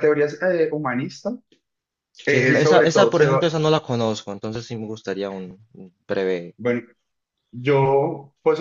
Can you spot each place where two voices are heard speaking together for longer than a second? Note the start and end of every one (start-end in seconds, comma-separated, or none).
2.3-3.6